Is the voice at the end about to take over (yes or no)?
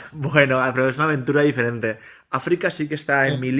no